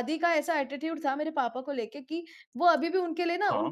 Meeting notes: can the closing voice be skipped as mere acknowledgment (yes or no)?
yes